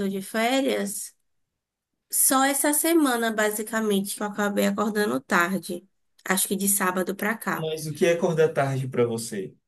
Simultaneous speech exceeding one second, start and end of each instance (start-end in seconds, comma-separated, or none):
none